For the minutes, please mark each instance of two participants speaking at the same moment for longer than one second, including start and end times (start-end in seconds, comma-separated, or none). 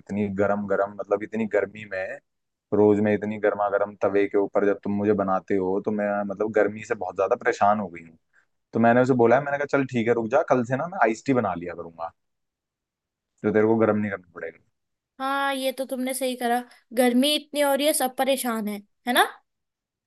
none